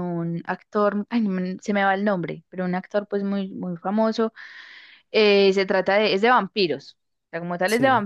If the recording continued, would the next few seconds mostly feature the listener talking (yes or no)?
no